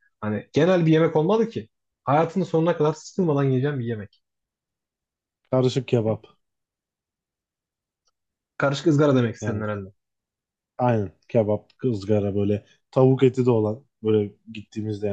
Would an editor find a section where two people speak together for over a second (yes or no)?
no